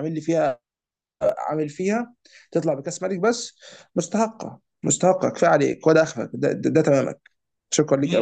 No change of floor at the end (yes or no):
no